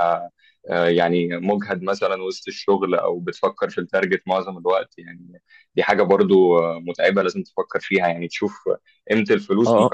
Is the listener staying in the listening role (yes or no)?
yes